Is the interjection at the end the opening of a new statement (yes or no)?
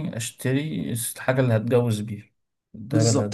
yes